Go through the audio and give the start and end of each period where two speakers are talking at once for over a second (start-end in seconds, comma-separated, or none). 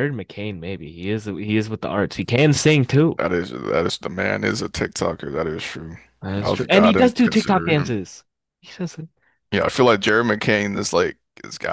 6.4-8.0